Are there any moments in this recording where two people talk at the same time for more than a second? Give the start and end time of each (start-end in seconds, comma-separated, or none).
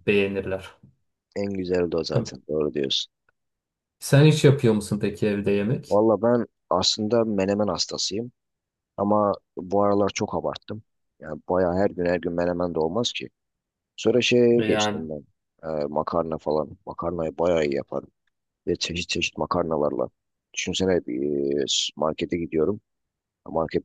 none